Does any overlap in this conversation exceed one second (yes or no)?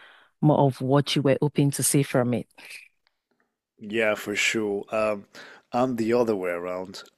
no